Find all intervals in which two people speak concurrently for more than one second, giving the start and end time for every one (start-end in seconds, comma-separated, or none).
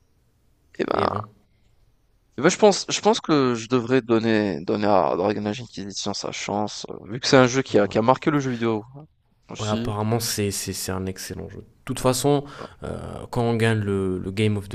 none